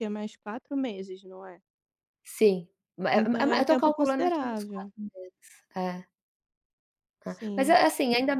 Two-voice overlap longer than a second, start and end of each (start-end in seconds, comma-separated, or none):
3.1-4.9